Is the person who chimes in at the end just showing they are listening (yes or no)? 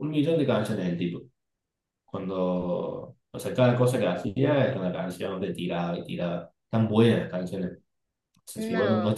yes